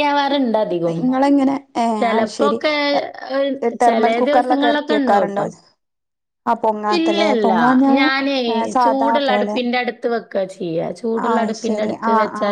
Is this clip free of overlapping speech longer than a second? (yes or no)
no